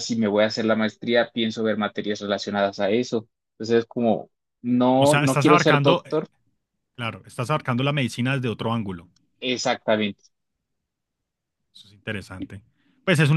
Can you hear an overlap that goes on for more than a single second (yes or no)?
yes